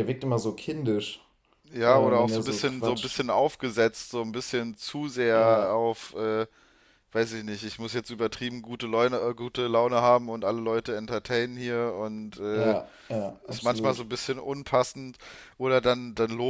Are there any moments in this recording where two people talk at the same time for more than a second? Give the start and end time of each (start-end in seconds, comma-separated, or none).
1.8-3.2